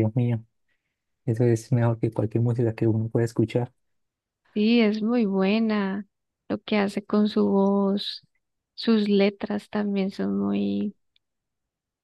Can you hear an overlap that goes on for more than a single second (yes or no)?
no